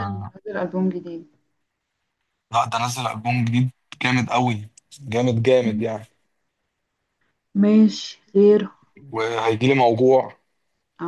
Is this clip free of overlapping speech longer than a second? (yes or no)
yes